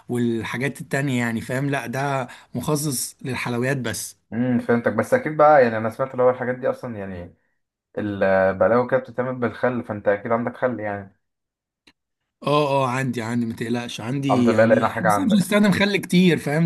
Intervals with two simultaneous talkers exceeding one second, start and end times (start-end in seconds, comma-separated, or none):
14.3-15.6